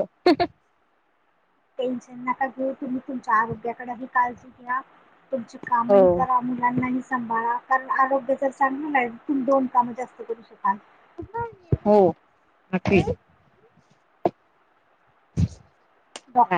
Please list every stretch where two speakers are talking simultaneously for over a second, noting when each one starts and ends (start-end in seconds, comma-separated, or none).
none